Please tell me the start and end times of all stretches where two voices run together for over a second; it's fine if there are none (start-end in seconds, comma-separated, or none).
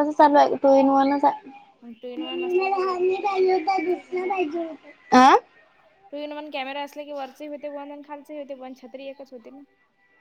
2.5-4.5